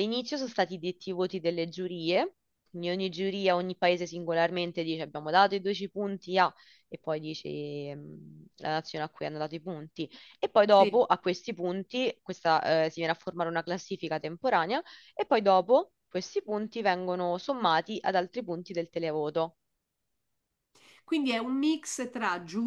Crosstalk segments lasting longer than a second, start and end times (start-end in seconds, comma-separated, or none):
none